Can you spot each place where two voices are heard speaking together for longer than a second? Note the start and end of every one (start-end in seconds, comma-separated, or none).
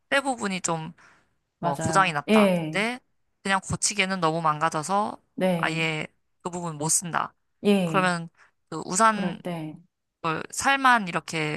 1.6-2.8